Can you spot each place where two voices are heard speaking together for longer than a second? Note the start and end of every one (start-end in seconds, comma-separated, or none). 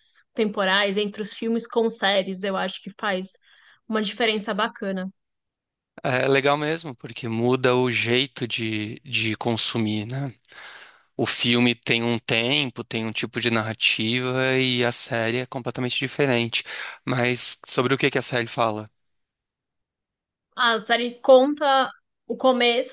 none